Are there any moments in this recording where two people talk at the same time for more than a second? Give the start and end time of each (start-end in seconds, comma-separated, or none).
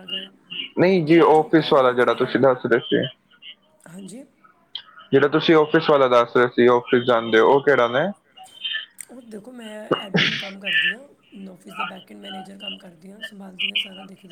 0.9-2.4